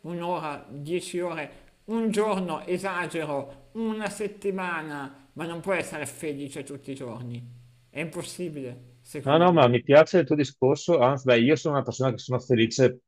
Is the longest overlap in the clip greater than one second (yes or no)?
no